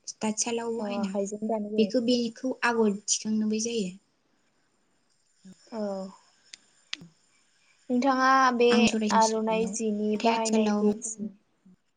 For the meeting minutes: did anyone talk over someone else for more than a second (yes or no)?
yes